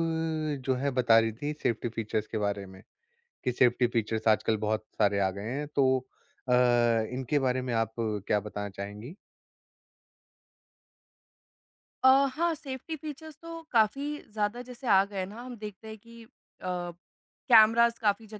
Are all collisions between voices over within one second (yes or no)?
yes